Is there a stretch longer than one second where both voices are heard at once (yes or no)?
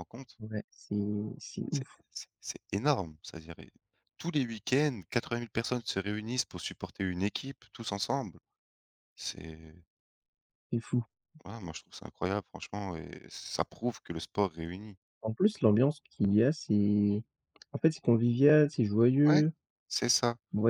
no